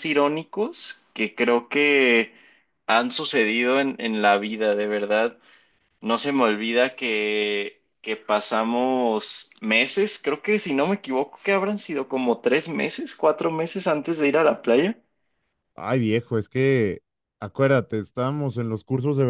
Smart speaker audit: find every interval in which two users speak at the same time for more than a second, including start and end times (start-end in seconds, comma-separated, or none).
none